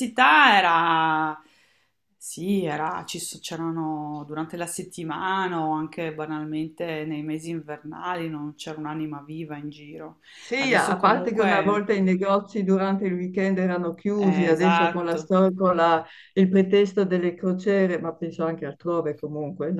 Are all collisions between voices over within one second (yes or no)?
no